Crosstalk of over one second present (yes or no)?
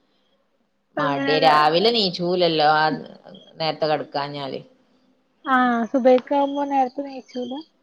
no